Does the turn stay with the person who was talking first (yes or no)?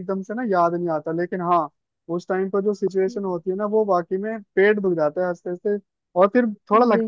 yes